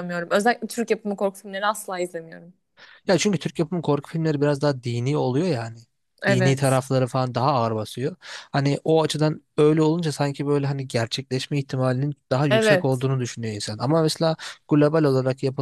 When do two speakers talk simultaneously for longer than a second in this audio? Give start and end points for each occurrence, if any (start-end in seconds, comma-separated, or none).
none